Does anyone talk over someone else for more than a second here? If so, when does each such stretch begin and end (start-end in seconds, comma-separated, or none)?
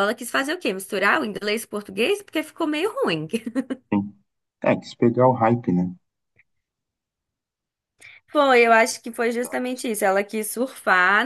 none